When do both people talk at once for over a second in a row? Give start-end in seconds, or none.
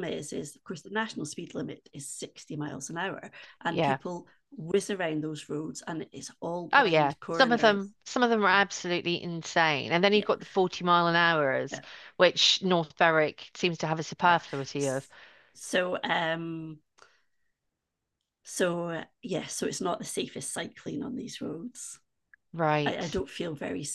6.7-7.9